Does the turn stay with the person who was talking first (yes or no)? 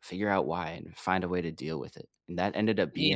yes